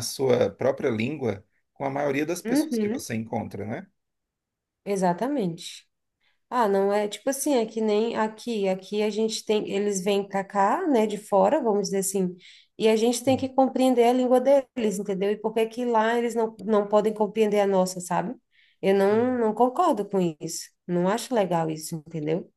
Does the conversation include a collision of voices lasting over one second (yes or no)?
no